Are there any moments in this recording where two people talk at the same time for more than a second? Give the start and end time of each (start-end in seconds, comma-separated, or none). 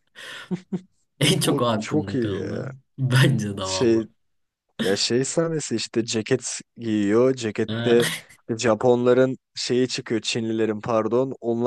1.4-2.7